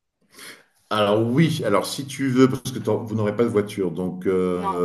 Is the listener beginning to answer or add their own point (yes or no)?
no